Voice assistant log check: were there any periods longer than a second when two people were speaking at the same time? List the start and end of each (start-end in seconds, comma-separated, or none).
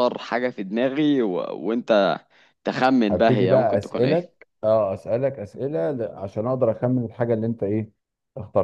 3.1-4.3